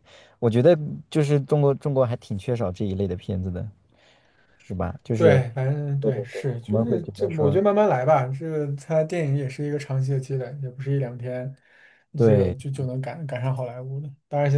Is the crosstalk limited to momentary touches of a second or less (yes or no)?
no